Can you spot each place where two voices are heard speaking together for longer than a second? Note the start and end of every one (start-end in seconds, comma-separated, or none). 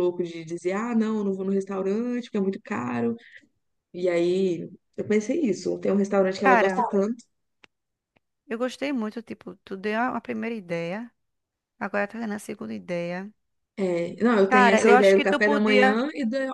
14.5-16.0